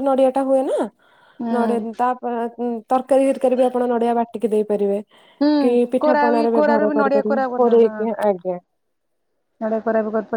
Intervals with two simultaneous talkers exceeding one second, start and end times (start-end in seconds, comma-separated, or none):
6.0-8.0